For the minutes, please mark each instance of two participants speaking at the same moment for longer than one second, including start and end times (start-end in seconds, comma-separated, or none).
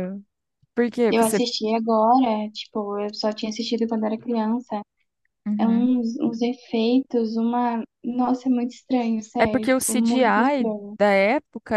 9.4-10.9